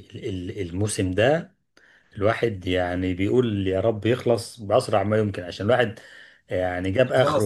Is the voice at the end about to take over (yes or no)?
no